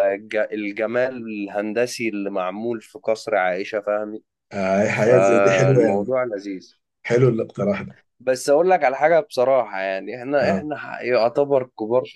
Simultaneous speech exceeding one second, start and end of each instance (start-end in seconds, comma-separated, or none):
4.9-6.2